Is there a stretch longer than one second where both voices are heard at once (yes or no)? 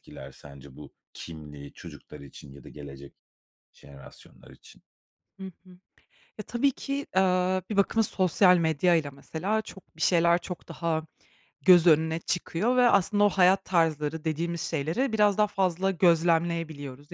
no